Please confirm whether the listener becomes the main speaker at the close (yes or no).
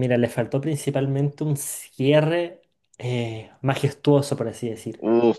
yes